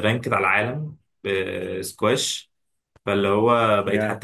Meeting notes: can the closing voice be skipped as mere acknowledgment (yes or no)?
yes